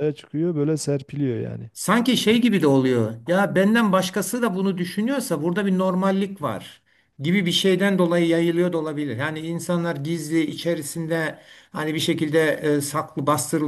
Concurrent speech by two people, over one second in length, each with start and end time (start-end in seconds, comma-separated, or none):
none